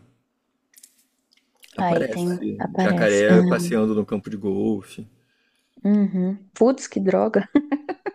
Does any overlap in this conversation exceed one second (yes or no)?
yes